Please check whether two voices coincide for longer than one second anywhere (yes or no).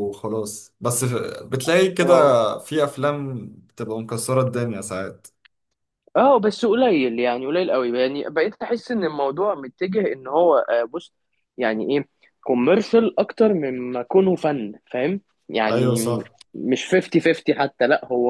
no